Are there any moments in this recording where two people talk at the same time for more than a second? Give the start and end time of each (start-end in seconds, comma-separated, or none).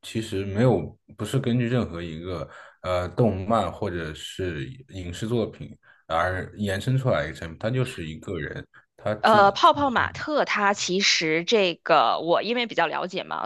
none